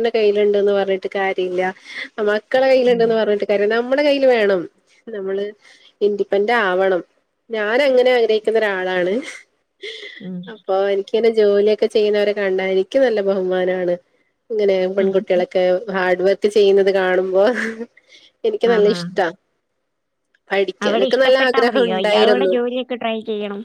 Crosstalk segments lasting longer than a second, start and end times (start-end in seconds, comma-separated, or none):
20.9-22.5